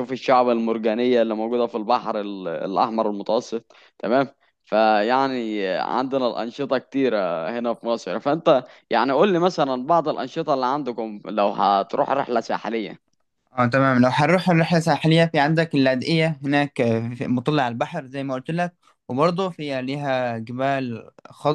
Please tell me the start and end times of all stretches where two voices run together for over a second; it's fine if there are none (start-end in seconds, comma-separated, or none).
none